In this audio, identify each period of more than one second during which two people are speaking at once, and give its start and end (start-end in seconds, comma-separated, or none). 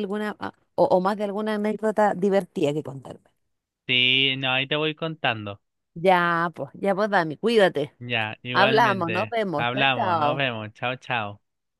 8.5-10.4